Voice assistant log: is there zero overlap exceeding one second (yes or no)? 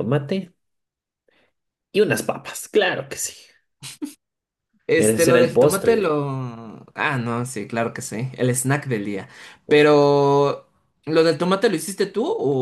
no